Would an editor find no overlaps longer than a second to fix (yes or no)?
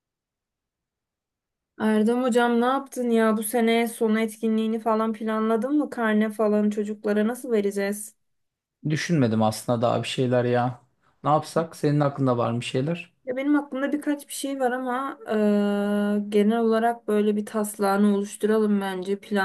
yes